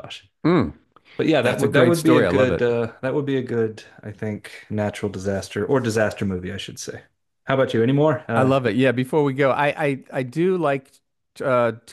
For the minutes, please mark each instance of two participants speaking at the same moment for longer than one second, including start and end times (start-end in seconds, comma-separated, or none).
1.4-2.6